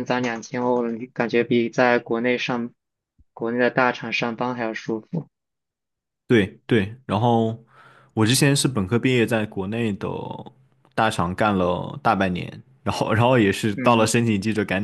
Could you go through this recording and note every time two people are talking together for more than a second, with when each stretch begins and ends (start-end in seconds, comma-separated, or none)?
none